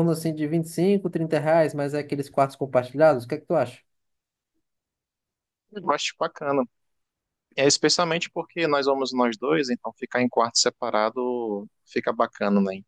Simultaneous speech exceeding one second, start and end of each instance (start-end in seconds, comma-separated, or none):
none